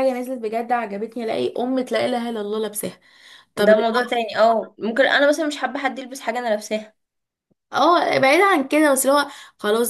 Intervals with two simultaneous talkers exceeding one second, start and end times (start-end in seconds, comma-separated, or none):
none